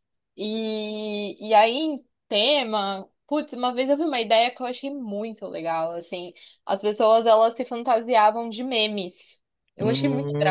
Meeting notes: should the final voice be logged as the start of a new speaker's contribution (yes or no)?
yes